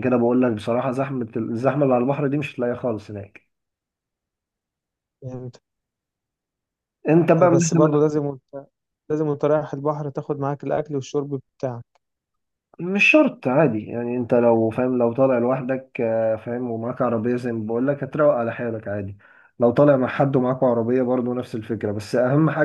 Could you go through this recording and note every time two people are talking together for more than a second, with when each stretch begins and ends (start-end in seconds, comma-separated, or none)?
none